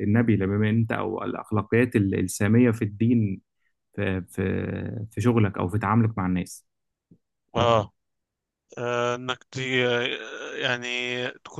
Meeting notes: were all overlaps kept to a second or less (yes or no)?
yes